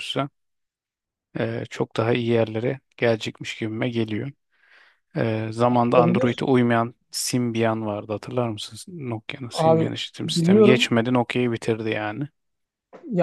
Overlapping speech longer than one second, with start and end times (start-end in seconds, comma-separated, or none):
9.5-10.9